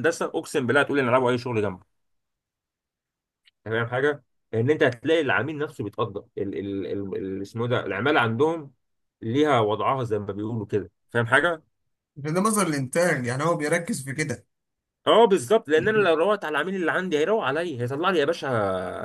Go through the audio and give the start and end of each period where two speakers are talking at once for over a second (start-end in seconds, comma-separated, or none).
none